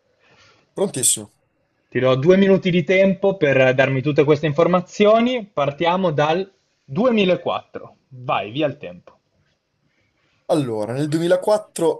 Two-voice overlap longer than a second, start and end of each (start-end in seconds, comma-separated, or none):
none